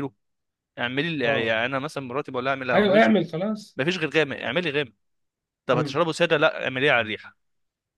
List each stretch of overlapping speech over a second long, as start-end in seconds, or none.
none